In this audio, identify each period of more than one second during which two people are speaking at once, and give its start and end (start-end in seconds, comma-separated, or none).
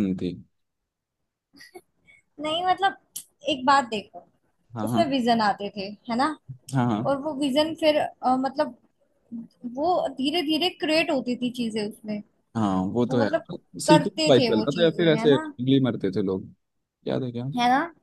13.9-15.5